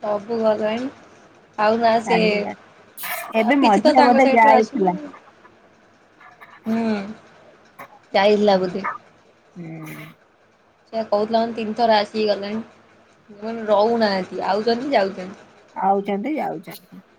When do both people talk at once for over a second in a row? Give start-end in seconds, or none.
3.5-4.9